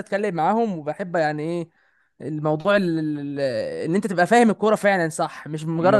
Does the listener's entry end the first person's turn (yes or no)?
no